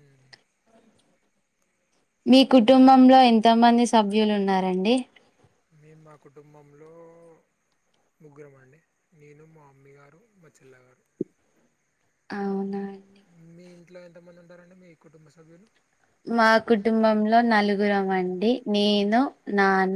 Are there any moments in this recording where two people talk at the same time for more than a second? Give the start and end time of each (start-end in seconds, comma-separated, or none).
none